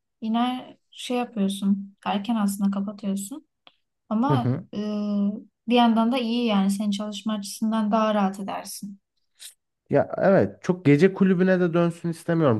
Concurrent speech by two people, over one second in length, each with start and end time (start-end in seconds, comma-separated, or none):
none